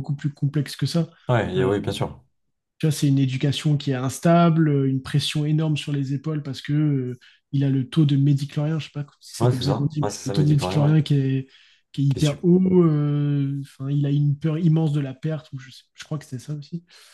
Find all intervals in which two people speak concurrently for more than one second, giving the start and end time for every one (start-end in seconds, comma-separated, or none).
9.4-10.9